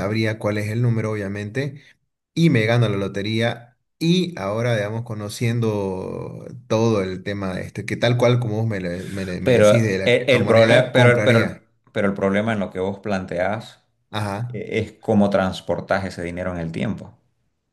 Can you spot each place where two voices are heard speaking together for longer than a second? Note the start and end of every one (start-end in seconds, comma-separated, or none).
9.4-11.6